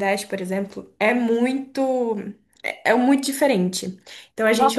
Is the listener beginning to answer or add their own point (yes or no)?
yes